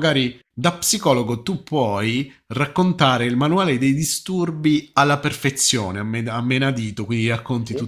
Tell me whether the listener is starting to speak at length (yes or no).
no